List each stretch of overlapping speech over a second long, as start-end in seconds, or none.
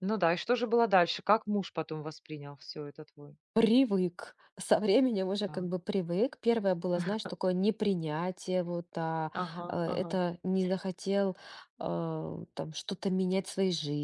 none